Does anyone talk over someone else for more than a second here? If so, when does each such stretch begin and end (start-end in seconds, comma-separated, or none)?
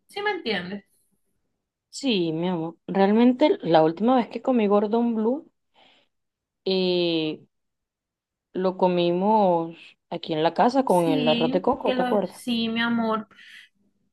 10.8-12.4